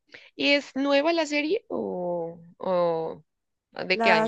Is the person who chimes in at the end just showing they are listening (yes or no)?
no